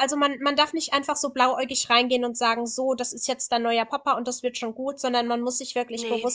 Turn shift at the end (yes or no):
no